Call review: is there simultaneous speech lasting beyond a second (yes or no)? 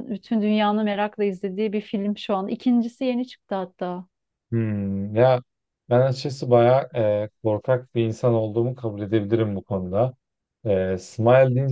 no